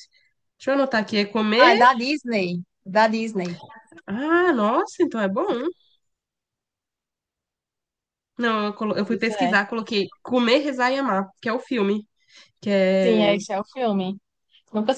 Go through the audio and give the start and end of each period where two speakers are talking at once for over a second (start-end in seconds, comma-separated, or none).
none